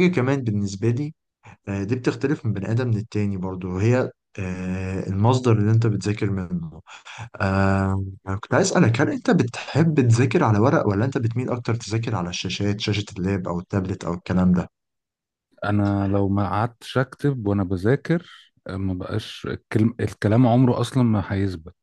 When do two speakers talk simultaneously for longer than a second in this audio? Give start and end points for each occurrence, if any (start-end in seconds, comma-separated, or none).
none